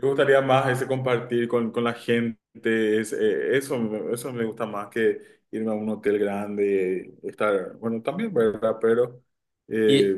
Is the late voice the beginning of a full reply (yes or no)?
no